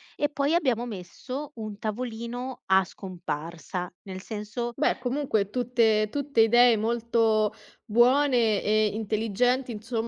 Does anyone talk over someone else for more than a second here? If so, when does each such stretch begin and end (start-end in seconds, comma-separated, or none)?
none